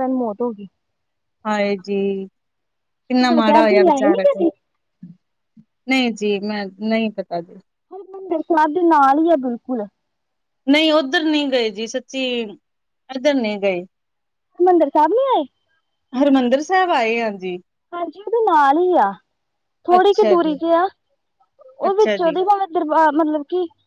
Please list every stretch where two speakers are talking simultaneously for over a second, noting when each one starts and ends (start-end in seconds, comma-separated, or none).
3.0-4.4